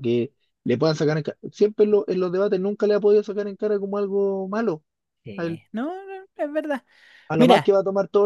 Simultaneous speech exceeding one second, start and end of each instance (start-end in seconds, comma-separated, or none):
none